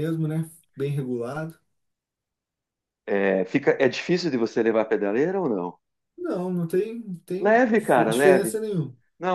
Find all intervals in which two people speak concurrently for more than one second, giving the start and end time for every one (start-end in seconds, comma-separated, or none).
7.4-8.6